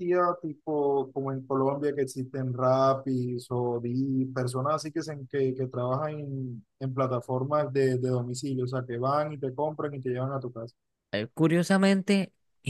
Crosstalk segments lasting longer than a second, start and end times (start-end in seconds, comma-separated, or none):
none